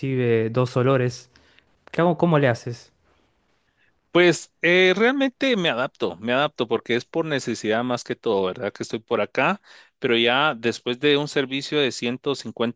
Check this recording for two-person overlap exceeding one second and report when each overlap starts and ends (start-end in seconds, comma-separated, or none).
none